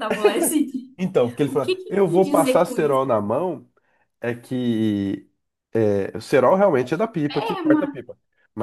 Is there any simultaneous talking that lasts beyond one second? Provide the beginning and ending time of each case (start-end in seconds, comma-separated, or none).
1.4-3.0